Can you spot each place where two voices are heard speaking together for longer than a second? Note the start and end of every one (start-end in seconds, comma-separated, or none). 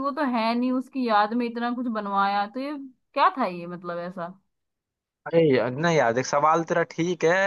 none